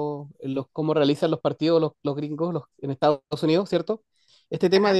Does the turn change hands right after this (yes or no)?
no